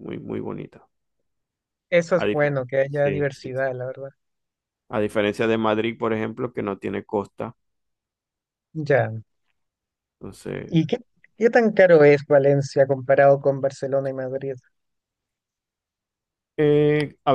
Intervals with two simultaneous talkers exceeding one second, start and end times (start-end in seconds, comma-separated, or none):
2.1-3.6